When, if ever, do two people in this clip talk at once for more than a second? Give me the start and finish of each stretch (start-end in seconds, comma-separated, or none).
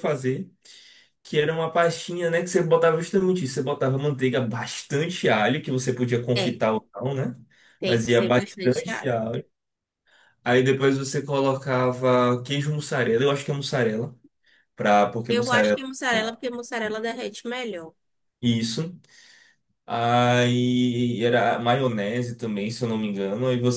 7.8-9.2